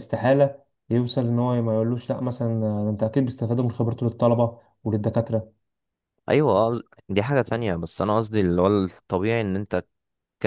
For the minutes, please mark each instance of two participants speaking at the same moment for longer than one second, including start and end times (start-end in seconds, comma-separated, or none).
none